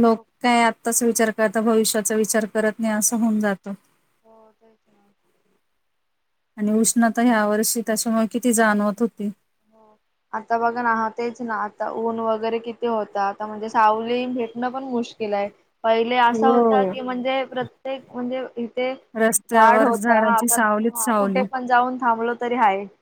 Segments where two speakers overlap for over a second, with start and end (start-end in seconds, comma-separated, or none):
19.6-21.4